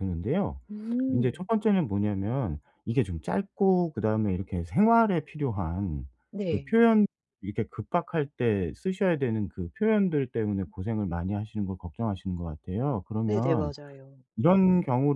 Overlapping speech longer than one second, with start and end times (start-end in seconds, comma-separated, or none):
none